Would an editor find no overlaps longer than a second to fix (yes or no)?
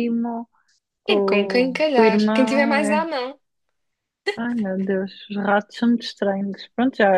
no